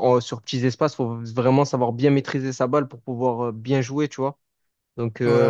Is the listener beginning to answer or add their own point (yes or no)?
no